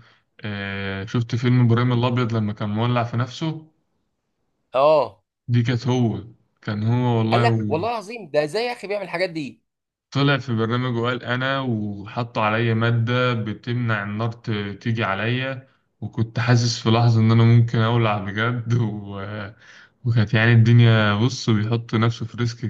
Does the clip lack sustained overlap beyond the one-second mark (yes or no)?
yes